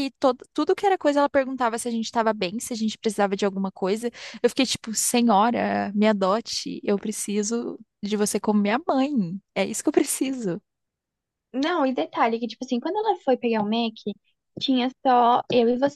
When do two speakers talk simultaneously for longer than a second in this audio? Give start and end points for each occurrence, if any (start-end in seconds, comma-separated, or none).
none